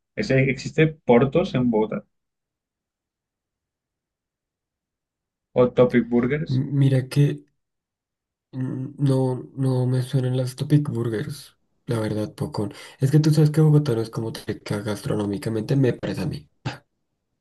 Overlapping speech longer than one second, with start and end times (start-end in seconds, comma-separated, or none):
none